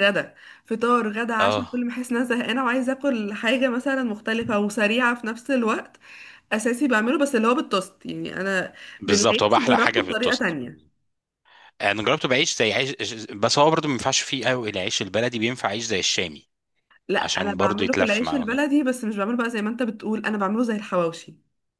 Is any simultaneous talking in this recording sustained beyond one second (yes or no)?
yes